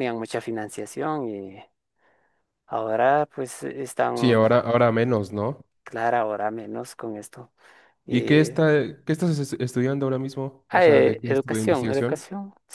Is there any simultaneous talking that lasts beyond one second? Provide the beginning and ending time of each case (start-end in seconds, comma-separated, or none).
10.7-12.2